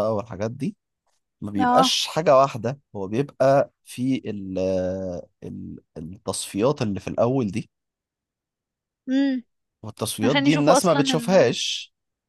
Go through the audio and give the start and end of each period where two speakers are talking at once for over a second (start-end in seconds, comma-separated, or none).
10.2-11.6